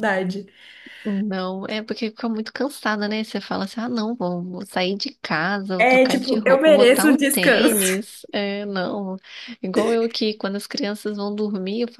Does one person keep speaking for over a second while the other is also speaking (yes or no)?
yes